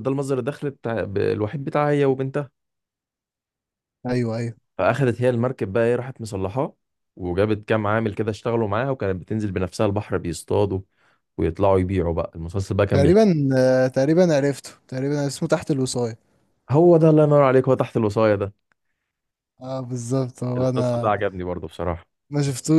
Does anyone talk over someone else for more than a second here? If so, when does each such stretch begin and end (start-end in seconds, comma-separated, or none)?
none